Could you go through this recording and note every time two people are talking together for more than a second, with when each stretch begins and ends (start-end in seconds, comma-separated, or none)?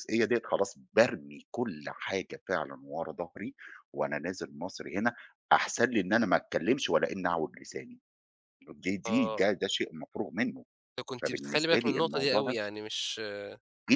11.2-12.6